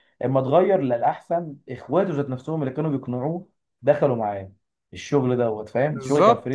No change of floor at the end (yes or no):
no